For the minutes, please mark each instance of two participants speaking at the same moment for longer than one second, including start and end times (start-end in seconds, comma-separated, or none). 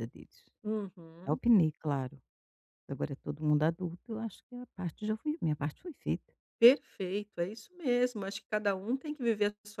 none